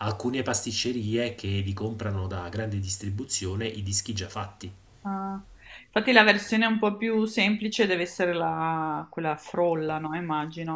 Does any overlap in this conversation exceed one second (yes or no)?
no